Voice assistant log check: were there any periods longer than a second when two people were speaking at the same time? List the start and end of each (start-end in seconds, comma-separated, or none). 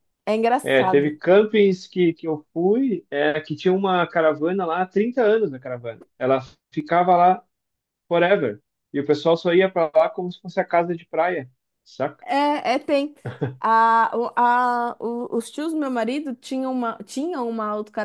none